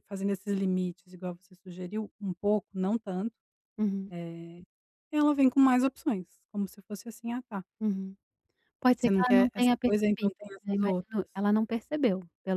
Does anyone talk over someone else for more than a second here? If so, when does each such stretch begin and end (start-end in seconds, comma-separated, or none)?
9.0-11.4